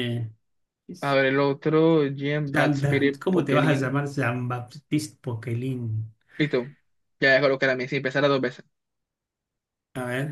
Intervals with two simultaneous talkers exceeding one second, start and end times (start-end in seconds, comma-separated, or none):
2.4-4.0